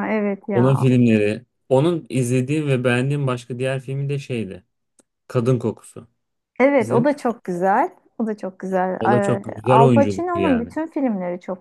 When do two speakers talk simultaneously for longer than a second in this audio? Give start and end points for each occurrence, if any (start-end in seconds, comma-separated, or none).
9.0-10.7